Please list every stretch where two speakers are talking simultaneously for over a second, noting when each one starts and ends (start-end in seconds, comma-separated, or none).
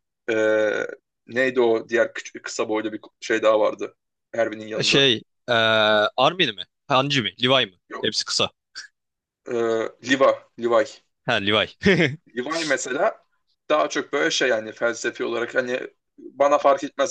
none